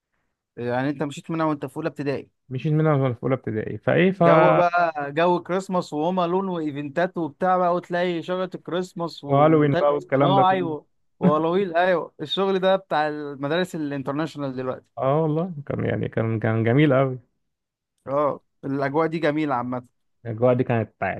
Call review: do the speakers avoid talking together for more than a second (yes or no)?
no